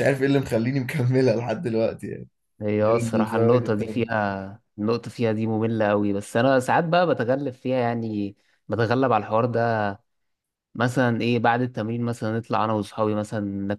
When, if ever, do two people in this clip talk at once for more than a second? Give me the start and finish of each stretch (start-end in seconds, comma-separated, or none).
2.9-4.2